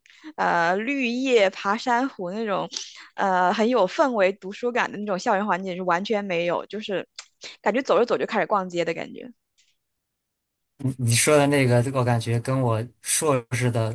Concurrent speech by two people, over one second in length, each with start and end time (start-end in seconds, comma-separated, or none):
none